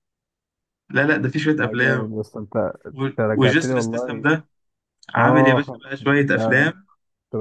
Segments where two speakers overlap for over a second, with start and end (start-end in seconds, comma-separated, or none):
2.9-4.3, 5.2-6.7